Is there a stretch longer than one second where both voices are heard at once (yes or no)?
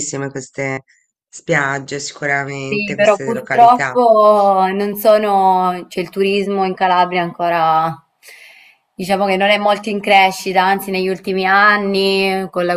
yes